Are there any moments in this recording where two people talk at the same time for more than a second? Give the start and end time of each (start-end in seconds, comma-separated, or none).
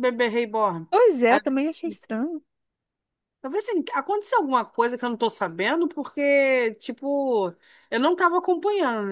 none